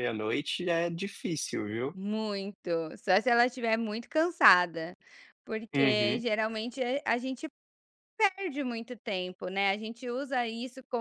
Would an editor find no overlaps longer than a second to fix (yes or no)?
yes